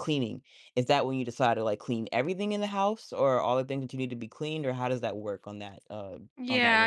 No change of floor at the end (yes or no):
no